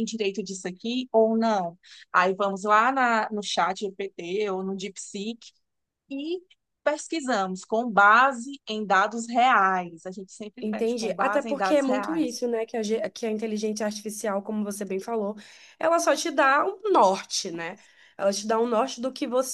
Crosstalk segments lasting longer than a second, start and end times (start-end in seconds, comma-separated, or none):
10.6-12.4